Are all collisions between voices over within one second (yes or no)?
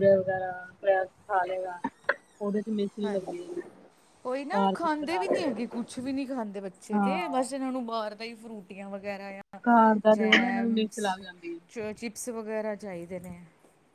no